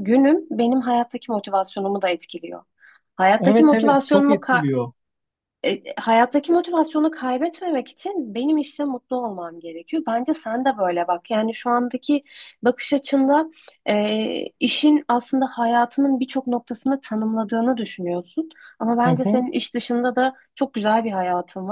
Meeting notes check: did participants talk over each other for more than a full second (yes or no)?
yes